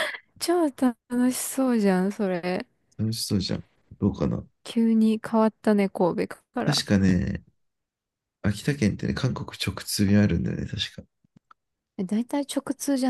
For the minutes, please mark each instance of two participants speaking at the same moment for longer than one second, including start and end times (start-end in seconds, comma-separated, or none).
none